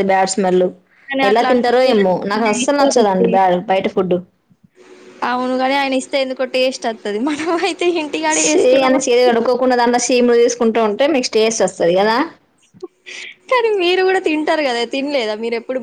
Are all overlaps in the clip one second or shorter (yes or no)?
no